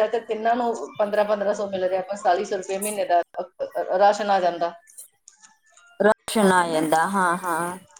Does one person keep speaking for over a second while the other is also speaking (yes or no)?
no